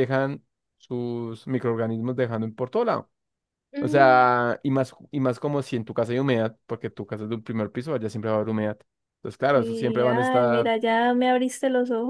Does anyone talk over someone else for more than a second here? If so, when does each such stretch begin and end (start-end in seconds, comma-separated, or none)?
9.5-10.7